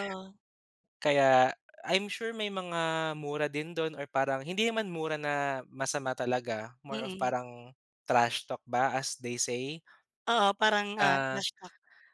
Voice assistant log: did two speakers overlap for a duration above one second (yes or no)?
no